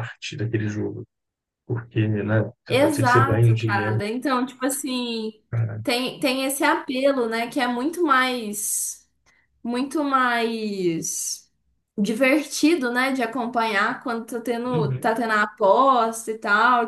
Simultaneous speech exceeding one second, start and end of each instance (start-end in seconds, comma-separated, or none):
2.7-4.0